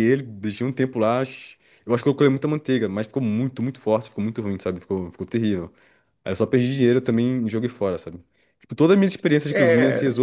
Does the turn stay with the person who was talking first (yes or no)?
yes